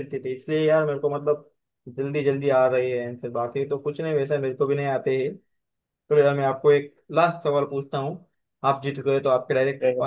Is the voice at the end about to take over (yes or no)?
no